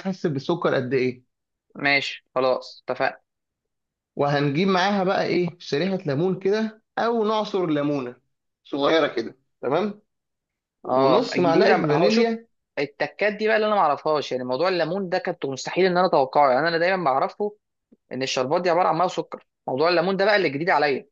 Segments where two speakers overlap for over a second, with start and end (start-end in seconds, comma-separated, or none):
10.9-12.3